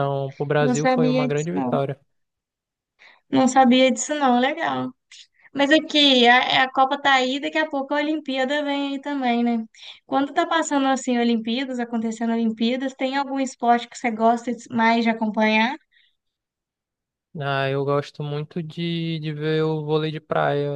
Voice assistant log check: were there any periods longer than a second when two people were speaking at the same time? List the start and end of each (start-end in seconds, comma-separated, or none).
0.6-1.8